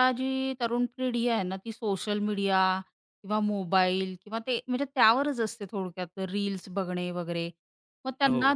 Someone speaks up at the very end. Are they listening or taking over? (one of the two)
listening